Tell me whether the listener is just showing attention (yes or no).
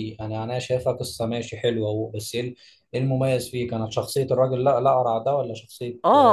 no